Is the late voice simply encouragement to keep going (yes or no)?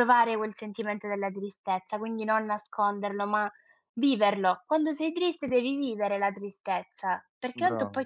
yes